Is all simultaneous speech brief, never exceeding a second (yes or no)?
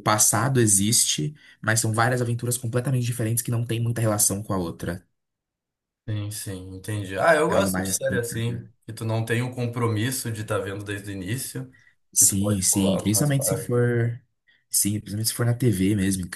no